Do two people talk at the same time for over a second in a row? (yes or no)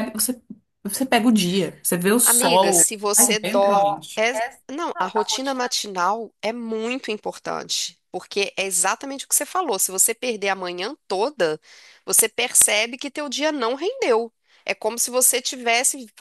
yes